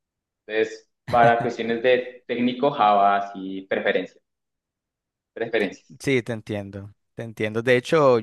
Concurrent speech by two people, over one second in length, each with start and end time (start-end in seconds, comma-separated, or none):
none